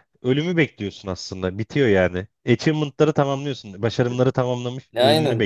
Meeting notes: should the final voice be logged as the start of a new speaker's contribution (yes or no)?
yes